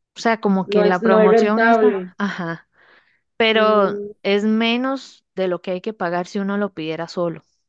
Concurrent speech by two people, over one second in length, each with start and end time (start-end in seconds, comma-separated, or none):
0.7-2.1